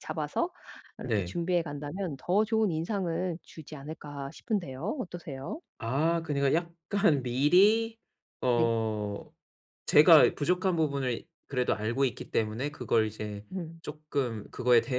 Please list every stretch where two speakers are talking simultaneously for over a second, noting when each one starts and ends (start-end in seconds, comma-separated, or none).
none